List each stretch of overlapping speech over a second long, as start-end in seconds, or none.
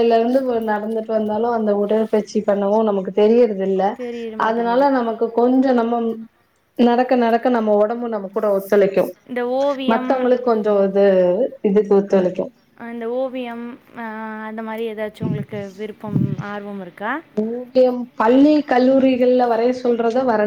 none